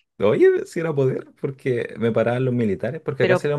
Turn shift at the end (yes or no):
no